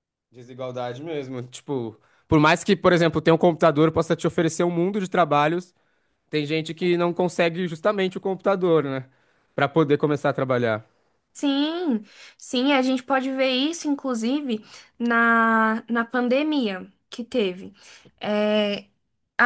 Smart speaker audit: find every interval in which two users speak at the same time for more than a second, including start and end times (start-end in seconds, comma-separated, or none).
none